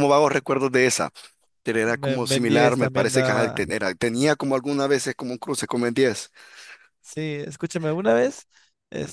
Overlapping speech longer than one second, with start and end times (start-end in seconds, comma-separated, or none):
1.9-3.6